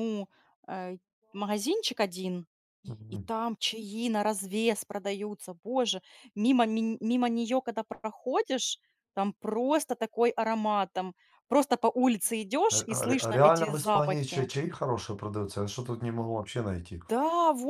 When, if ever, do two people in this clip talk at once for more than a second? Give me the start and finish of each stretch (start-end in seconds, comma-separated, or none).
12.7-14.5